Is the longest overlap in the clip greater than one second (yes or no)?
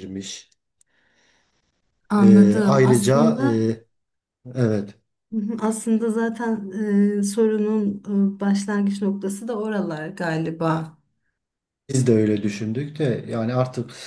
yes